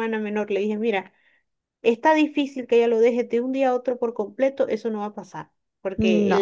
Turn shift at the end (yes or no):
no